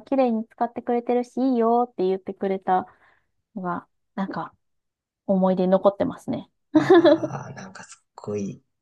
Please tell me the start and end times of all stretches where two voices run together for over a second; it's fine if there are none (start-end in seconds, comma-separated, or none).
none